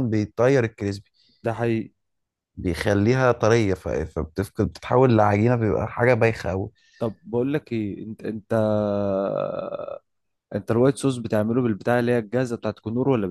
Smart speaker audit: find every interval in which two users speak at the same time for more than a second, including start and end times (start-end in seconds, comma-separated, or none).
none